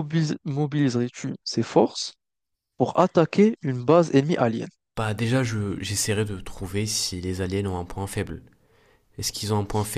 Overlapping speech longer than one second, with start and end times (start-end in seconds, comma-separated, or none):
none